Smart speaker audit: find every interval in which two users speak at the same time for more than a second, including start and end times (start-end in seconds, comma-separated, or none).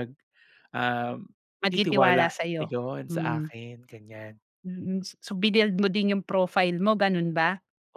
1.7-3.5